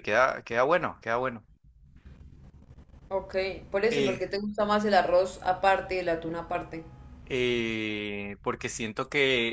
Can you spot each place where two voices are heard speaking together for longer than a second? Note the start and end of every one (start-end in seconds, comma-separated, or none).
none